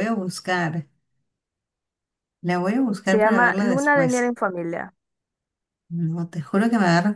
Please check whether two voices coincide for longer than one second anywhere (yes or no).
yes